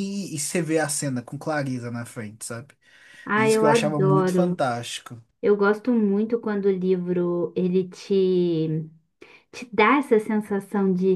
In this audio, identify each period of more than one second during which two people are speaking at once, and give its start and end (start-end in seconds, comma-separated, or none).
3.4-4.6